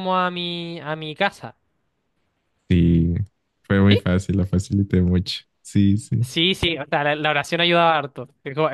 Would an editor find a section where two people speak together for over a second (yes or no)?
no